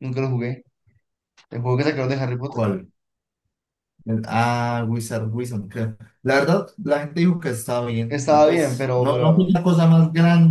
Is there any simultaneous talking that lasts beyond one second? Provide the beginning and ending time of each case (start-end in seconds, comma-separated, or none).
8.1-9.5